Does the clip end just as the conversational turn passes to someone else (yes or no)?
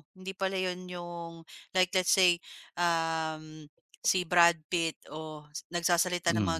no